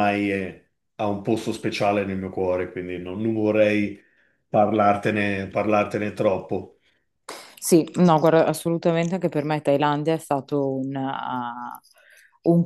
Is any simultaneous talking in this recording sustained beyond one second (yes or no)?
no